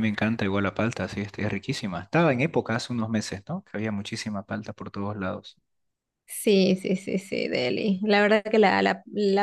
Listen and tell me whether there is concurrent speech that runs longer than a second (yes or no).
no